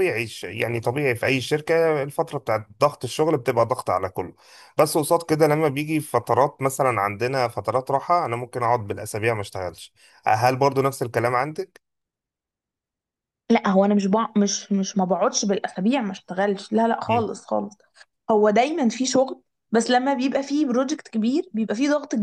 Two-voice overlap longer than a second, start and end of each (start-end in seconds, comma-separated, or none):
none